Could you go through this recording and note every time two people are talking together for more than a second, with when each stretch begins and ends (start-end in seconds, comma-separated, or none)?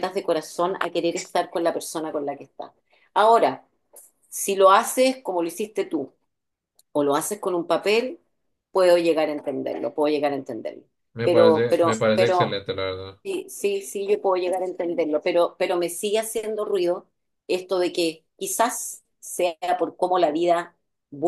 11.2-12.6